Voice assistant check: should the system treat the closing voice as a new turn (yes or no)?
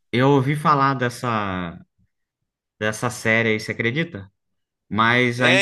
yes